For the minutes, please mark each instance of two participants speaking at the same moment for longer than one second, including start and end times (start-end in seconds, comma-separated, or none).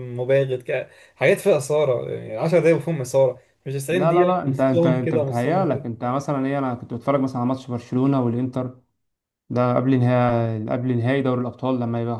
3.9-5.8